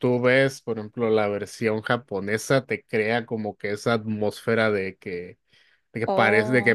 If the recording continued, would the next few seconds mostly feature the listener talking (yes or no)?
no